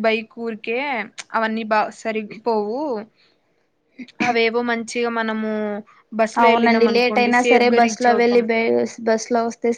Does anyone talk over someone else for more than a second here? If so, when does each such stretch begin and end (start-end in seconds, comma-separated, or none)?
6.4-8.4